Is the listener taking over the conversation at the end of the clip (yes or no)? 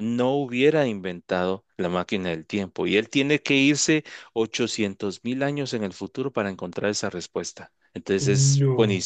no